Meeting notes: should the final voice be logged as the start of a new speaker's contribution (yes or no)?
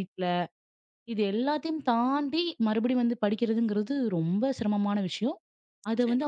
no